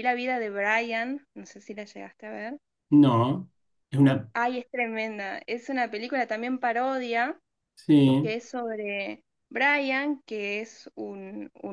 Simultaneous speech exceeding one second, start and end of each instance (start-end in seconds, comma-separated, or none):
none